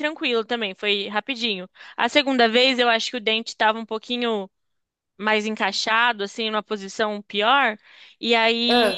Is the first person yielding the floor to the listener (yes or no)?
no